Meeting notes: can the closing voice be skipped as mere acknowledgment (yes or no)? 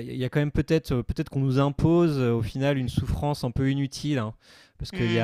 no